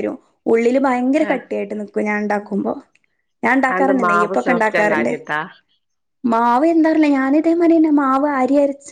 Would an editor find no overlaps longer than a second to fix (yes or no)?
no